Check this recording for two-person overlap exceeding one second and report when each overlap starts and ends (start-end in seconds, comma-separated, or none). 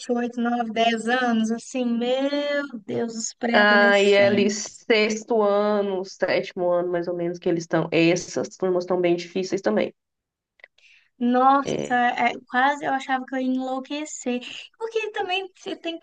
3.5-4.8